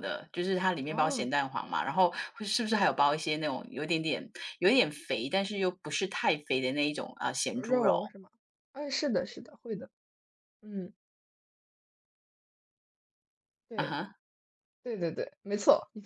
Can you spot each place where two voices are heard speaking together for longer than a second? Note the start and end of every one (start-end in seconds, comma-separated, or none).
none